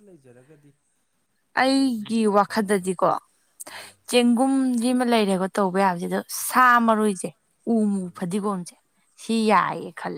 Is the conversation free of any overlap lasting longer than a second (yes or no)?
no